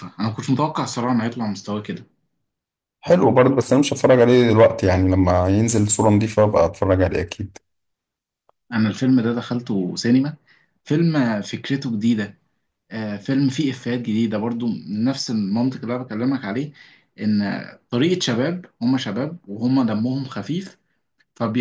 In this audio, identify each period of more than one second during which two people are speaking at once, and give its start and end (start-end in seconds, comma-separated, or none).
none